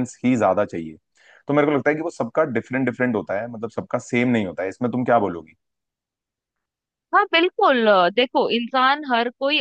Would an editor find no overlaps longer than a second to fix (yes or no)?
yes